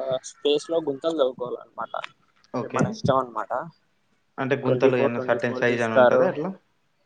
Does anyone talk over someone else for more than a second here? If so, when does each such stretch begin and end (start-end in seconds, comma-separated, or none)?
4.7-6.2